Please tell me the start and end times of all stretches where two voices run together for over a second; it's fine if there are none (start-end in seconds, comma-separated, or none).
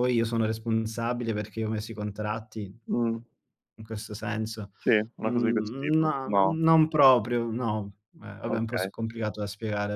5.2-6.6